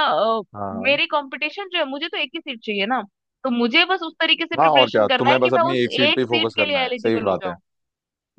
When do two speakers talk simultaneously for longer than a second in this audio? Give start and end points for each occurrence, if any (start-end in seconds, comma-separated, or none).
4.6-7.5